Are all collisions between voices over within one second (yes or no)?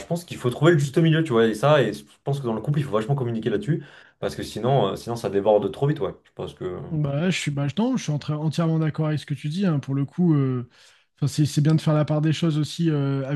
yes